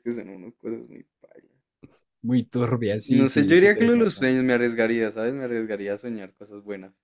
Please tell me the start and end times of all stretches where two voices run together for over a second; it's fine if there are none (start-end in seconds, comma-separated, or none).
3.0-4.3